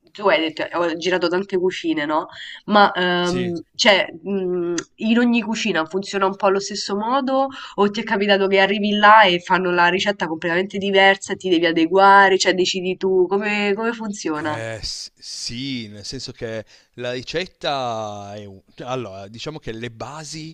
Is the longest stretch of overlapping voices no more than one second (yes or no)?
yes